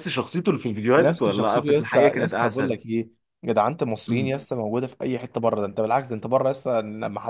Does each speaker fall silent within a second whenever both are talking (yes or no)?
no